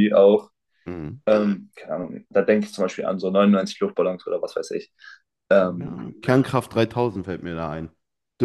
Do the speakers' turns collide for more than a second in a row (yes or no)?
no